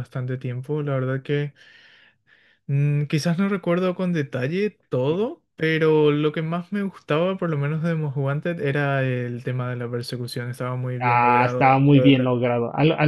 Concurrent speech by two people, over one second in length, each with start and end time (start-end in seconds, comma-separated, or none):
11.0-12.3